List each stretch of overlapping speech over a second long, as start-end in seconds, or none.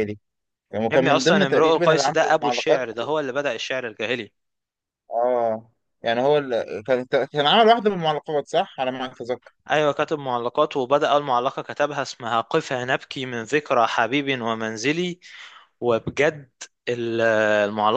0.9-2.9